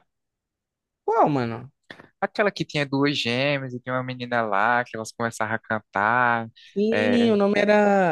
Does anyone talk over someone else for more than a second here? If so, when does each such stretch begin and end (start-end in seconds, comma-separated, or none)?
none